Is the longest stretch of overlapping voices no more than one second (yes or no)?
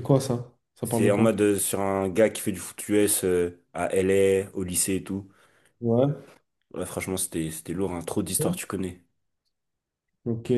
yes